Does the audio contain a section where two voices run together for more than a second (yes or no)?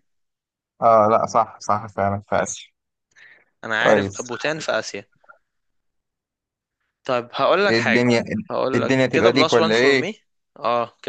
yes